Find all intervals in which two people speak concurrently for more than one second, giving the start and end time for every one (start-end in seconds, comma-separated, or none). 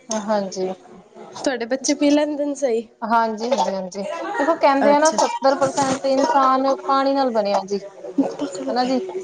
none